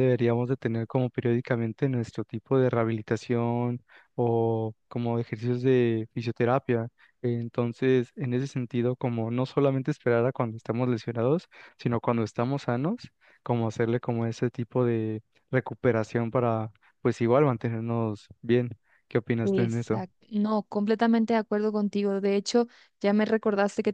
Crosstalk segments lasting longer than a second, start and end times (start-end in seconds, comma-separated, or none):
none